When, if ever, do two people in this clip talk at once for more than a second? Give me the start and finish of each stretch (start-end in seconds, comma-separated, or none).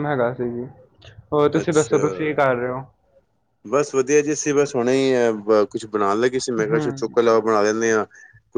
none